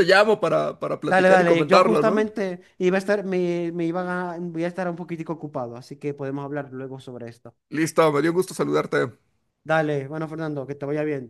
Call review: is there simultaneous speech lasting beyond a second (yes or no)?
yes